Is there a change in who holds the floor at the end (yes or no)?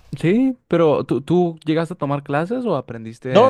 yes